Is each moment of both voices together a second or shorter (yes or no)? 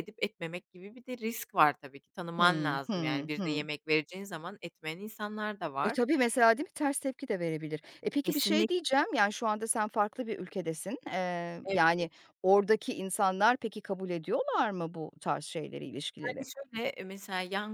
no